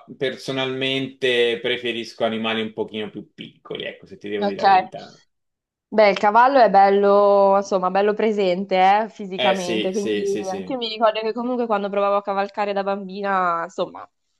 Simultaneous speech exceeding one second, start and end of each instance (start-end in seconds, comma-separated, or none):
9.4-10.8